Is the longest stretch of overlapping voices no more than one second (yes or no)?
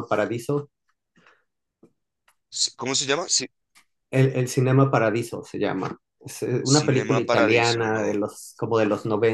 no